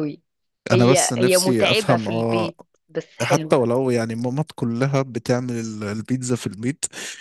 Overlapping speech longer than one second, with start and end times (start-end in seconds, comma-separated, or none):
0.7-2.5